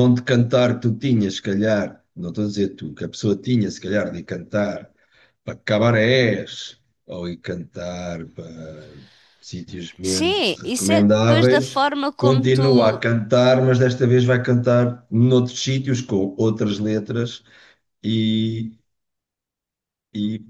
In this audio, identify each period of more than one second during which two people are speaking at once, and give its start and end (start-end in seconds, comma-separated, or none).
10.0-13.0